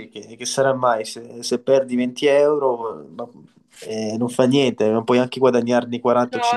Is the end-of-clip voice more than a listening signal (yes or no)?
yes